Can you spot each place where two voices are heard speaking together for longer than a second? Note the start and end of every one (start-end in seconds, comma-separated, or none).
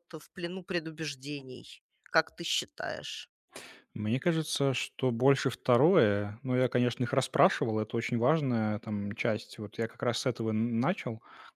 none